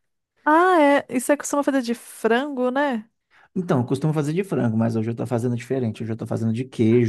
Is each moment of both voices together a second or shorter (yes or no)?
yes